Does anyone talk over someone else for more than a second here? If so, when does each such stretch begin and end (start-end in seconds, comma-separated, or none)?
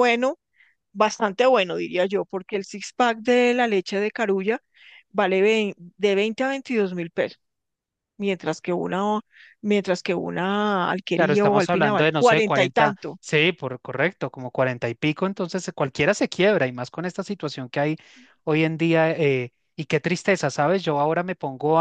11.2-13.2